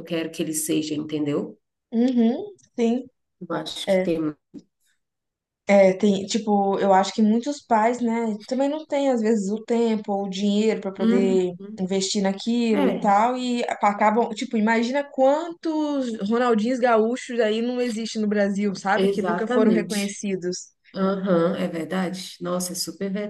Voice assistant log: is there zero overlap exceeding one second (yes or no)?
no